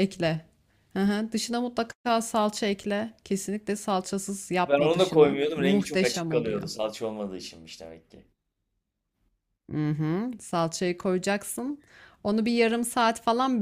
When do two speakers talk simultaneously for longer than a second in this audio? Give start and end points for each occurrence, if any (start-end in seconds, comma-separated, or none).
4.6-6.6